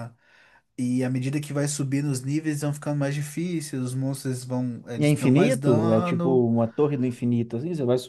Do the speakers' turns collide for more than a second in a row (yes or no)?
yes